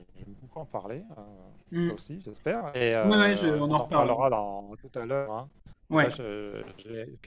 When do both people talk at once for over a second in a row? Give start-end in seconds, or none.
3.0-4.2